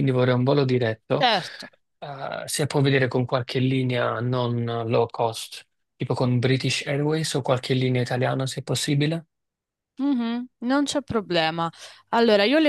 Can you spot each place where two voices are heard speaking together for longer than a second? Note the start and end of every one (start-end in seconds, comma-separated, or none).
none